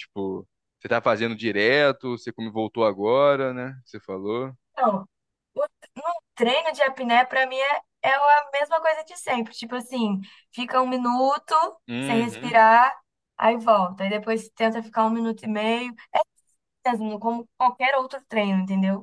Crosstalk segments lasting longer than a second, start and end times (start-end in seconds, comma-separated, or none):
none